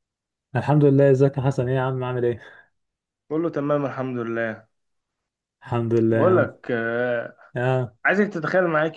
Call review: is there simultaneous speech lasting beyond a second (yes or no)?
no